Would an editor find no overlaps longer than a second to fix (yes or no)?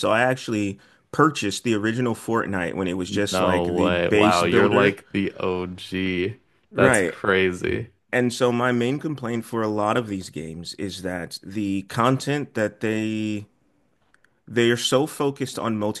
no